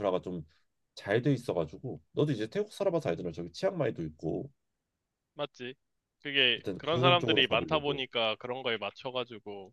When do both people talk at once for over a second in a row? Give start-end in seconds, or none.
6.5-8.0